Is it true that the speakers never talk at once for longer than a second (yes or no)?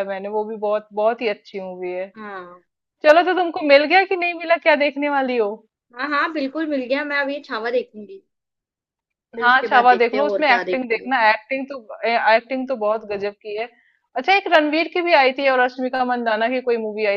no